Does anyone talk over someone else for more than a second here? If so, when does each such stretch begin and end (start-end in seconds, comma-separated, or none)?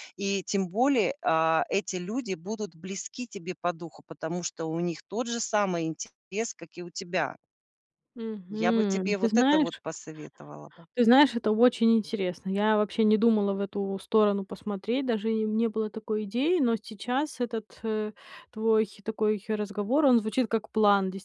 8.5-9.8